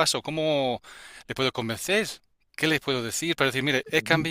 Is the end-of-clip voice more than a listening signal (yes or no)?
no